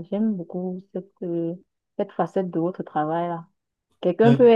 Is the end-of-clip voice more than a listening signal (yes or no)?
no